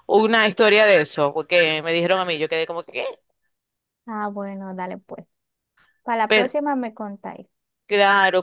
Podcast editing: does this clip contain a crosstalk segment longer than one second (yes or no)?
no